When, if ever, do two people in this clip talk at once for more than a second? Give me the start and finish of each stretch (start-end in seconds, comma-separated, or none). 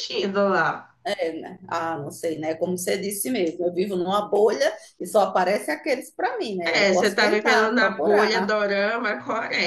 6.6-8.5